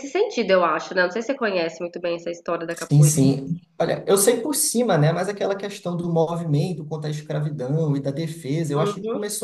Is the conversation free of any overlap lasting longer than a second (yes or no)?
yes